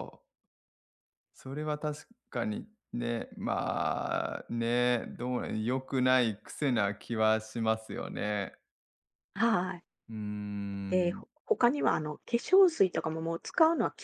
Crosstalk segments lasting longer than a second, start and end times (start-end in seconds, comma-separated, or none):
none